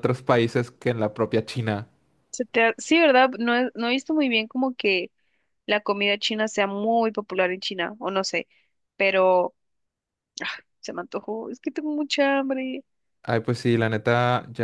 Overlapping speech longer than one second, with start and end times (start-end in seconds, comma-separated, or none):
none